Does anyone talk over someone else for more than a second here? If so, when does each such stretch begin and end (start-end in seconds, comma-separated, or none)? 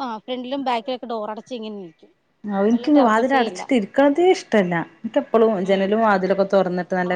none